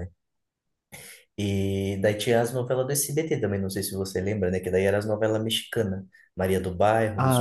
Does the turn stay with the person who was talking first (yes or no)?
no